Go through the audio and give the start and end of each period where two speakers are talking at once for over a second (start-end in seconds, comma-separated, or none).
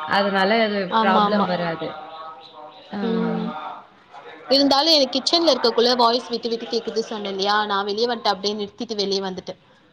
none